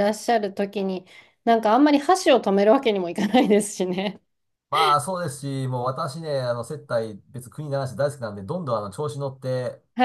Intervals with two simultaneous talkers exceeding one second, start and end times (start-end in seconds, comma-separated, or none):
none